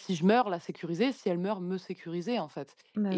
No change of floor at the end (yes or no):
yes